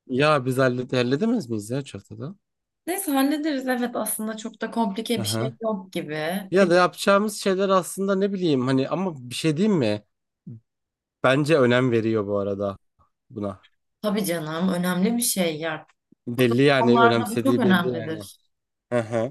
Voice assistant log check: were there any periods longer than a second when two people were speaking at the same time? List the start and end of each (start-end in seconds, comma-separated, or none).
16.4-18.2